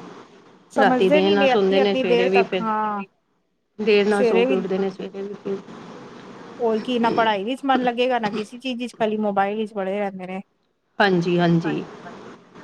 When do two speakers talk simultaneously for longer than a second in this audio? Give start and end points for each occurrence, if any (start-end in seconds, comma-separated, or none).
0.8-2.6